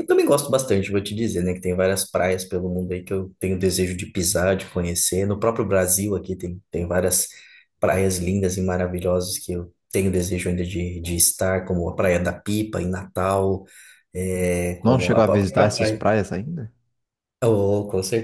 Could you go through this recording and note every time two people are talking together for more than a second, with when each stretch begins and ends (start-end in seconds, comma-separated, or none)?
14.8-16.1